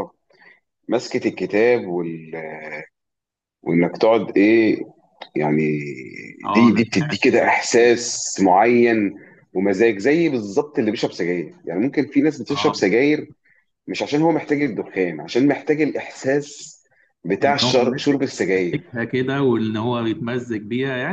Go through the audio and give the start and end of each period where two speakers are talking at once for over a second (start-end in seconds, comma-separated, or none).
6.5-7.9, 17.4-18.8